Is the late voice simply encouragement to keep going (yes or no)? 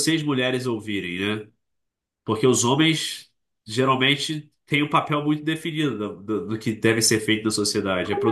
no